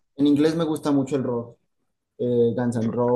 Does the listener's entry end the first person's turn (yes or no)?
no